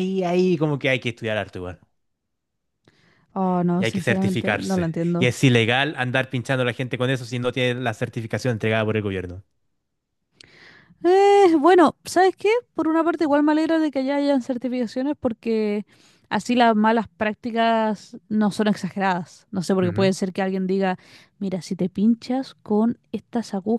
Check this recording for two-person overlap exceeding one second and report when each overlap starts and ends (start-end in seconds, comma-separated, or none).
3.8-5.3